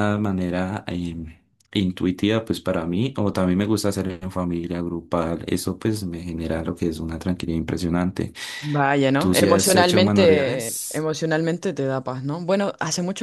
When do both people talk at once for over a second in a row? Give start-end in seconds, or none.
9.2-11.1